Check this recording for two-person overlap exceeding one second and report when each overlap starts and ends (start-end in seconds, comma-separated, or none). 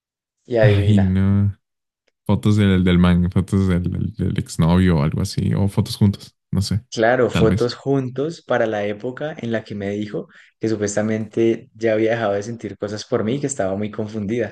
none